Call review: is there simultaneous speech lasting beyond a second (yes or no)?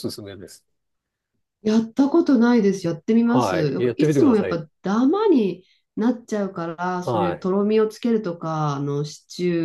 yes